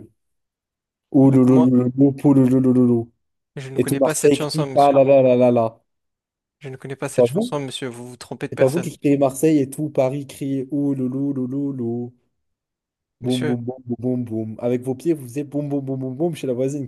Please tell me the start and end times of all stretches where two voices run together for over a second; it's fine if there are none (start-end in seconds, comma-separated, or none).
3.8-5.0